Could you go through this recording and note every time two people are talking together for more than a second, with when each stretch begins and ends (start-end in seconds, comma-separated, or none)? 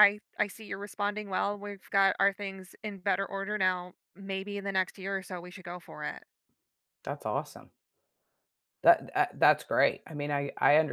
none